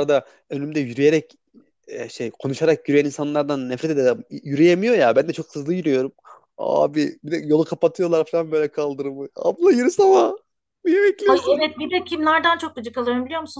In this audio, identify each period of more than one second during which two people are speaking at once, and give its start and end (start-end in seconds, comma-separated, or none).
none